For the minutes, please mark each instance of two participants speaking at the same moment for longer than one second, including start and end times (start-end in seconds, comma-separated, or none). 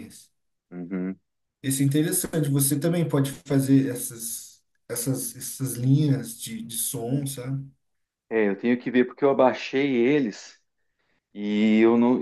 none